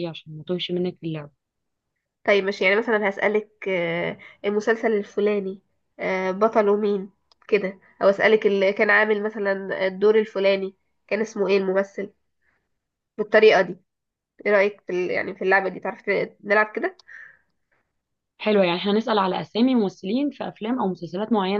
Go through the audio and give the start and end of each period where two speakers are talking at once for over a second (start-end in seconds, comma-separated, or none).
none